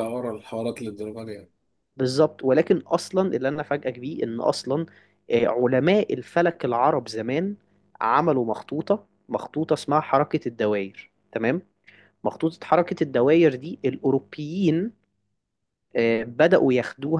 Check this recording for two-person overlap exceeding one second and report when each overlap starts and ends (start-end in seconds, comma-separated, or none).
none